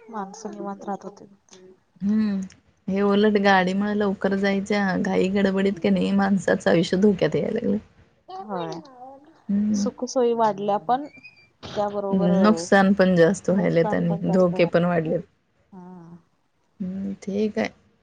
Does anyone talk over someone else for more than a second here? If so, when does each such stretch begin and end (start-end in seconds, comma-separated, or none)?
13.6-15.1